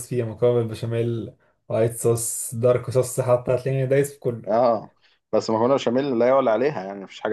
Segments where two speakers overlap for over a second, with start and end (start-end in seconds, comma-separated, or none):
none